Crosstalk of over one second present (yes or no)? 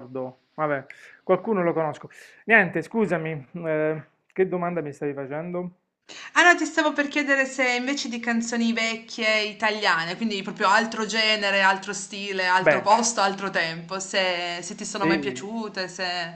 no